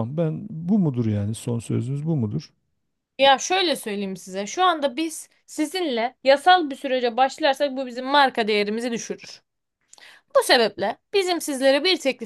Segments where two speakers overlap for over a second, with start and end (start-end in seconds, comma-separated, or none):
none